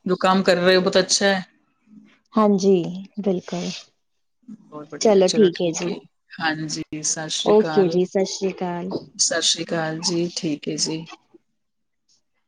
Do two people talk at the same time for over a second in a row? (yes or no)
yes